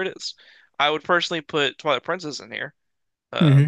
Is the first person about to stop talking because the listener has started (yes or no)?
yes